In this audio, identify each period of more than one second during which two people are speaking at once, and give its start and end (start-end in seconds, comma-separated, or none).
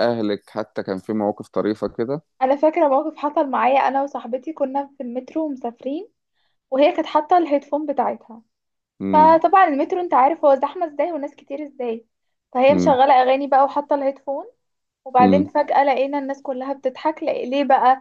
none